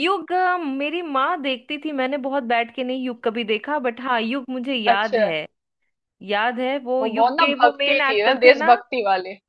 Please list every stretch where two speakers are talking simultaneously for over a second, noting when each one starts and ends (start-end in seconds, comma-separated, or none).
7.0-8.7